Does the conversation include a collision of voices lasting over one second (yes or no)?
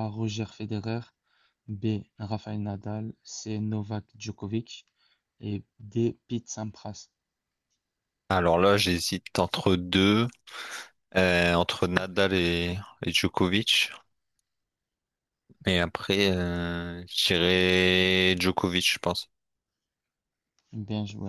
no